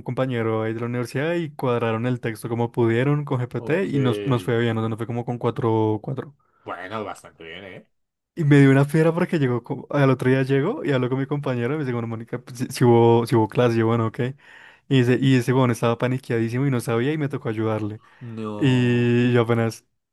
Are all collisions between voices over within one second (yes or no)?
yes